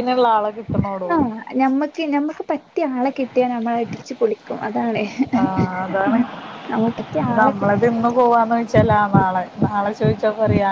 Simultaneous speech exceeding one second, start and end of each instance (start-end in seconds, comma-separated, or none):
none